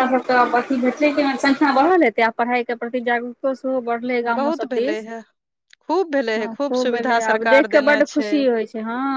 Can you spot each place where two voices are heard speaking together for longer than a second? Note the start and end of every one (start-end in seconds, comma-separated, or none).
6.4-8.3